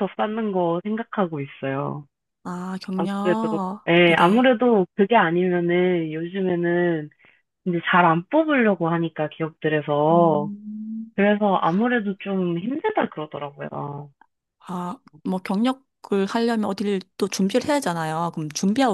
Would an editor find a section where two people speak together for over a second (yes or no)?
yes